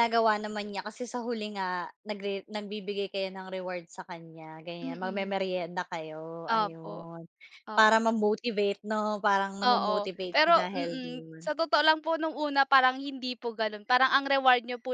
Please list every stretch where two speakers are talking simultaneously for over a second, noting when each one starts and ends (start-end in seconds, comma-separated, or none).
9.6-11.5